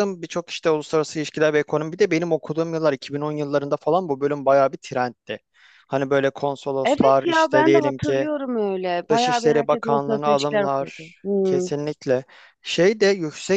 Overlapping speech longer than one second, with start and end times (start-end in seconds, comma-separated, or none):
6.8-8.3, 9.1-11.7